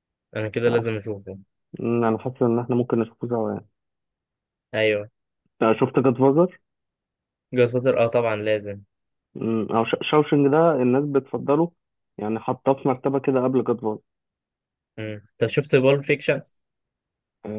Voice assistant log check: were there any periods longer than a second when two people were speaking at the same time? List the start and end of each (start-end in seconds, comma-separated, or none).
none